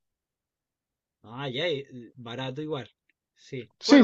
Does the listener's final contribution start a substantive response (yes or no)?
yes